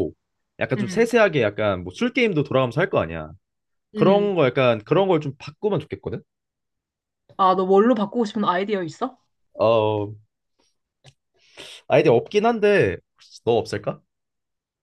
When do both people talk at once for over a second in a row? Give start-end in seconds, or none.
none